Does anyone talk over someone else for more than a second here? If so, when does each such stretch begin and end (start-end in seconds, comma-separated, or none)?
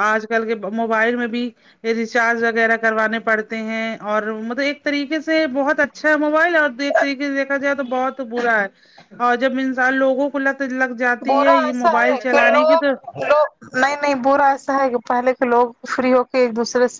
none